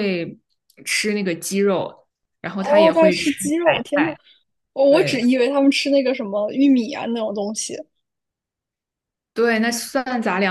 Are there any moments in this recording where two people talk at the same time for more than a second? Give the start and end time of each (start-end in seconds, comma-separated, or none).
2.6-4.2